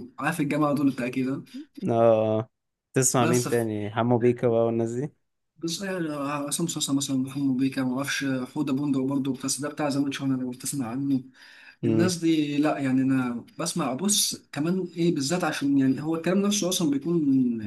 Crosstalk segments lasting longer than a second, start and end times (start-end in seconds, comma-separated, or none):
none